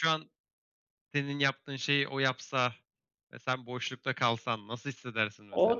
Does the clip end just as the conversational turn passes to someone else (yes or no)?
yes